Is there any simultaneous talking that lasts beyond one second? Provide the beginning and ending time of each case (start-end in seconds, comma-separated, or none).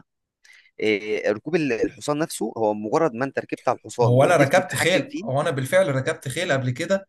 4.0-5.2